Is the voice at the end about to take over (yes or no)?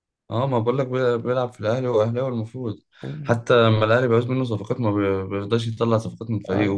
no